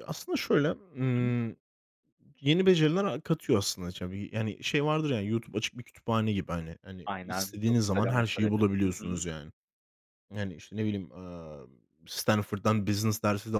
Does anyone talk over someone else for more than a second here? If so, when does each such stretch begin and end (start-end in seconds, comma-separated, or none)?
7.0-9.2